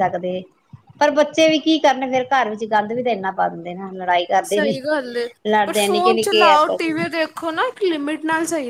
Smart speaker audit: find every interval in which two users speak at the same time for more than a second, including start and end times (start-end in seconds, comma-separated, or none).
5.7-6.9